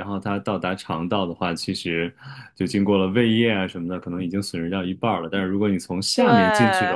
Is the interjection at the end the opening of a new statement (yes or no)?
no